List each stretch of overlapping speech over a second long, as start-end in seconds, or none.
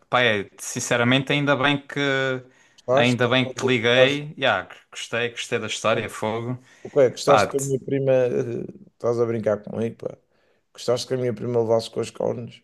2.9-4.2